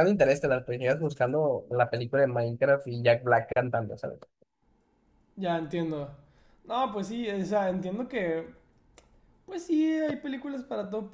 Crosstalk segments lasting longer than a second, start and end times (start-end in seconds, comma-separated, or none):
none